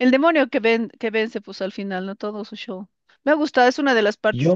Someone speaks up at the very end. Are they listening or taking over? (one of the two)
listening